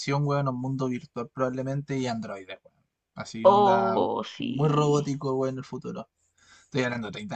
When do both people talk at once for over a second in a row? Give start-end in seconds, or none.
3.4-4.9